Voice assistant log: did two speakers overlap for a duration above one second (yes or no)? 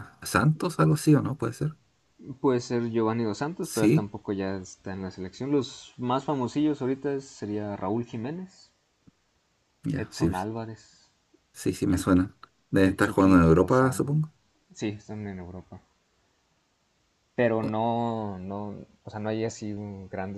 yes